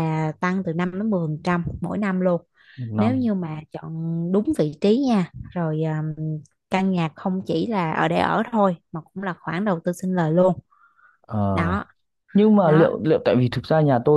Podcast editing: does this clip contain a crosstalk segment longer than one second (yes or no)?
no